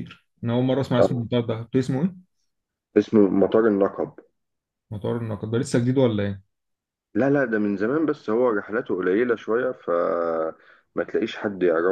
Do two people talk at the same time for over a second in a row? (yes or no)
no